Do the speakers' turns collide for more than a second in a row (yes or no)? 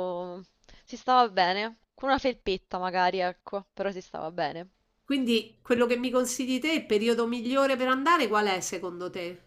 no